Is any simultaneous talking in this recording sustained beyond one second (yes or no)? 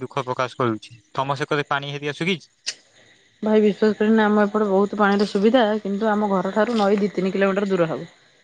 no